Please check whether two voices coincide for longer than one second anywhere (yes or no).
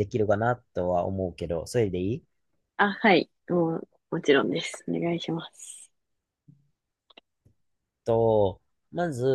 no